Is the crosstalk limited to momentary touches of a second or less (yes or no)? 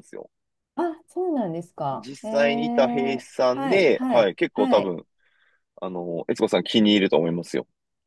no